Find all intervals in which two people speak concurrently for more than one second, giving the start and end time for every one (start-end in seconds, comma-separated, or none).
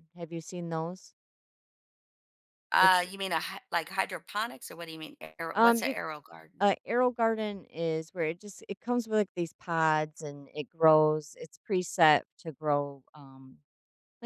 none